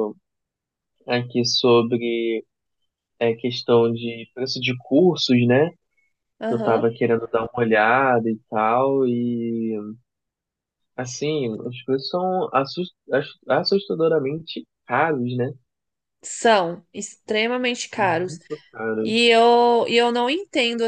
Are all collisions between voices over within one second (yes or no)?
yes